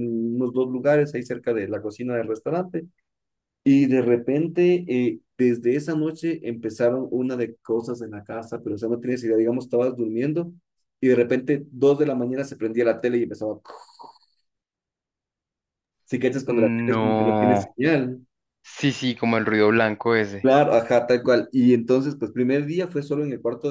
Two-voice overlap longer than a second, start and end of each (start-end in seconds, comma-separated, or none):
16.4-17.8